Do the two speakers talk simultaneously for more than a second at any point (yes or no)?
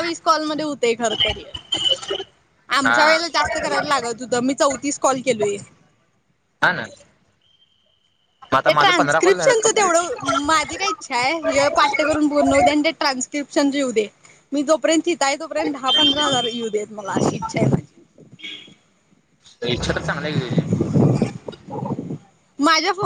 yes